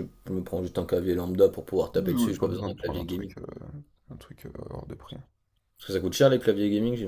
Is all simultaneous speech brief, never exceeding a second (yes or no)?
no